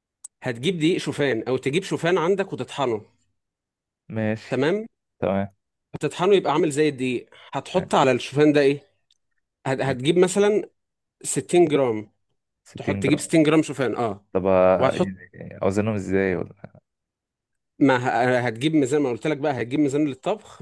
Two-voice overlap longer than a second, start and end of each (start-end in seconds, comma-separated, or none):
none